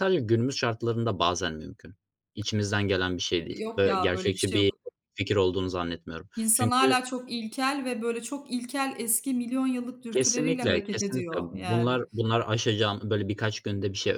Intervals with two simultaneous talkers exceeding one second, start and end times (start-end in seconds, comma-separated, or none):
3.5-4.7, 10.1-12.0